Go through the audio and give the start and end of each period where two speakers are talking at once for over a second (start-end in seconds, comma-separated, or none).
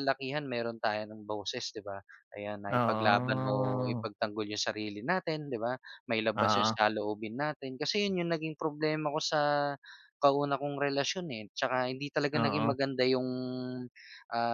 2.7-4.0